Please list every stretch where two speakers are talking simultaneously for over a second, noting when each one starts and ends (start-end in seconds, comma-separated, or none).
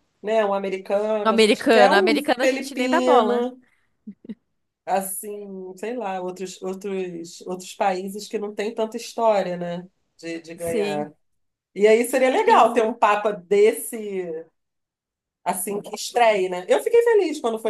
1.2-3.5